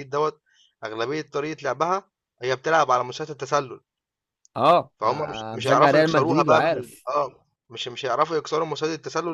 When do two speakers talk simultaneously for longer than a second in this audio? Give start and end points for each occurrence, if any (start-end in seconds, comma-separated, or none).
5.0-7.1